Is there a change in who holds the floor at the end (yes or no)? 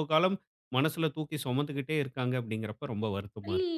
yes